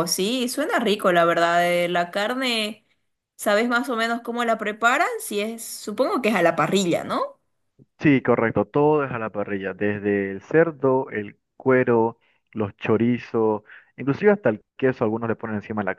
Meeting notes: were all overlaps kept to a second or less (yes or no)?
yes